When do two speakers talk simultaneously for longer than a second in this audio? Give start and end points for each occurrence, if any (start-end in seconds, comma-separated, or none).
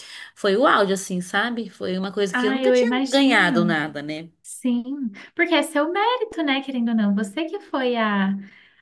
2.3-3.8